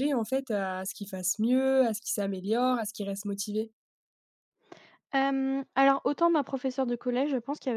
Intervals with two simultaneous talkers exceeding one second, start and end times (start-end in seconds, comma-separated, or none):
none